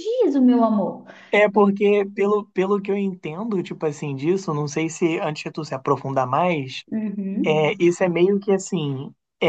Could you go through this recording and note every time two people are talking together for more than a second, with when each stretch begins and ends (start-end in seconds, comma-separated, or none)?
none